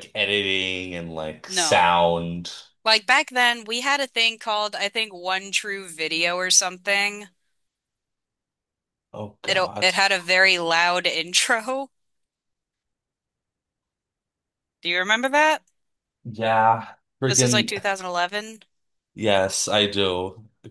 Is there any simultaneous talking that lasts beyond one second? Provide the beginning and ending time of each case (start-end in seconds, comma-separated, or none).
none